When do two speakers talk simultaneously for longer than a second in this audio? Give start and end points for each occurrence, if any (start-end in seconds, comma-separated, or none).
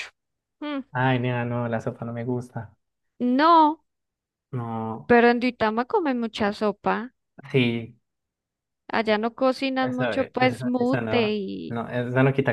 9.8-11.8